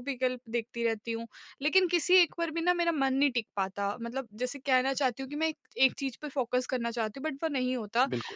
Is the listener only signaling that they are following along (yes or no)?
yes